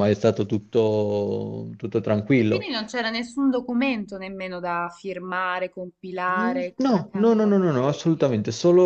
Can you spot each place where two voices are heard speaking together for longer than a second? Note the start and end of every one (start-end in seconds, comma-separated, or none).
6.3-8.3